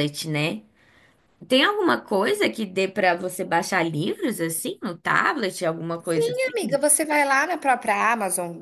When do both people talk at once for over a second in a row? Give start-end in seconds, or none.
none